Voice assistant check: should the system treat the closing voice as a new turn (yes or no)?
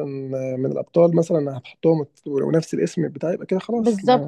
yes